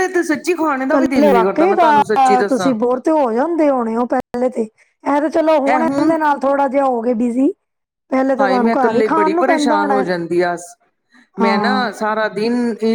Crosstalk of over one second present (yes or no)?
yes